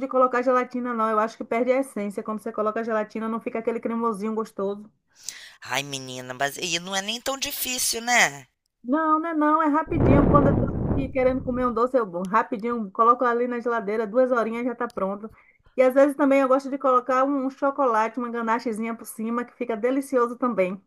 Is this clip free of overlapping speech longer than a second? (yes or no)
yes